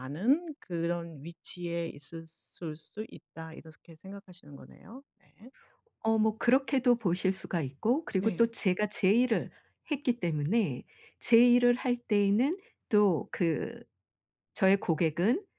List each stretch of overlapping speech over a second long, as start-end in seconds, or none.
none